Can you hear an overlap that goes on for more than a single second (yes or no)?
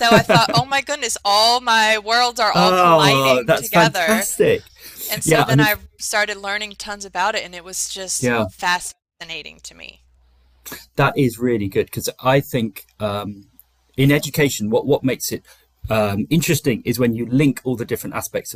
yes